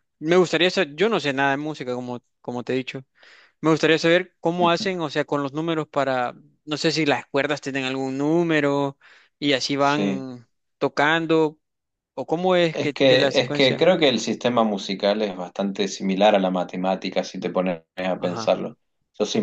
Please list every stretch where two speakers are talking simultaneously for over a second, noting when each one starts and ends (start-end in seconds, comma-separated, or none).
12.7-13.9